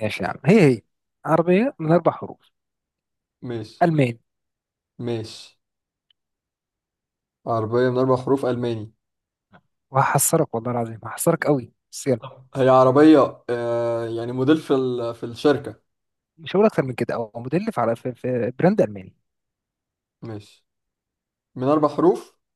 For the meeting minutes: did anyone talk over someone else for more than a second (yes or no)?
no